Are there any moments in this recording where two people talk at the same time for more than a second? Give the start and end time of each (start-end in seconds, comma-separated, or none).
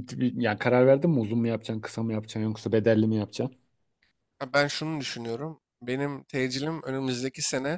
none